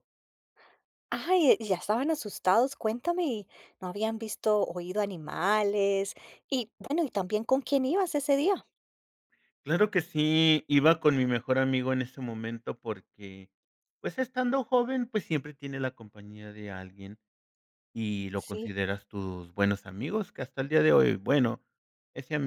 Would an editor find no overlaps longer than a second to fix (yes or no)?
yes